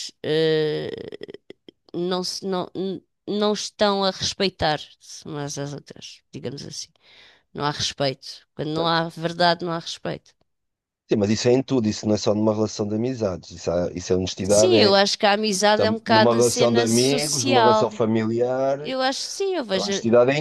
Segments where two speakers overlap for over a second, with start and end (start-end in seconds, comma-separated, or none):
15.7-17.9